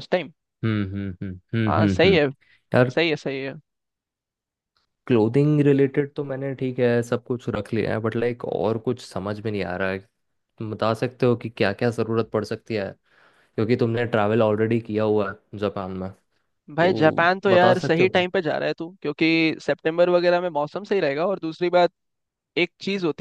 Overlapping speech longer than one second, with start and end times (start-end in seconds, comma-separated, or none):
16.8-18.2